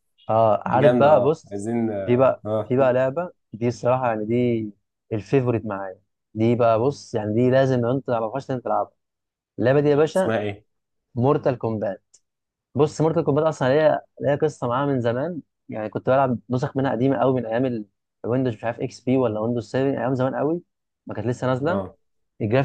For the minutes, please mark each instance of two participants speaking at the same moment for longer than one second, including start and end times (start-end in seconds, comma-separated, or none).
0.8-2.7